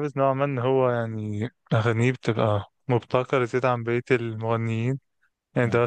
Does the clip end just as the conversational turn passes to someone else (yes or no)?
no